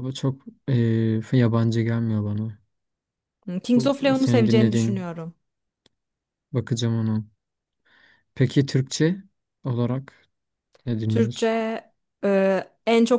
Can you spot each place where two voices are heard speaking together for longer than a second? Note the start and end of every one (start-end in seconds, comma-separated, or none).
3.8-5.0